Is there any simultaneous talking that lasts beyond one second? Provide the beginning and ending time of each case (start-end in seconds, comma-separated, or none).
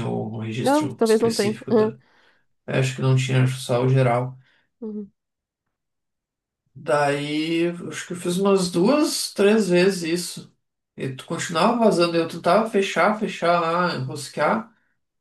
0.6-1.9